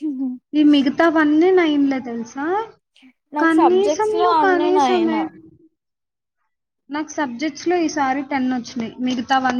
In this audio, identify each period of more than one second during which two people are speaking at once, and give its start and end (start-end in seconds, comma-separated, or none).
3.4-5.2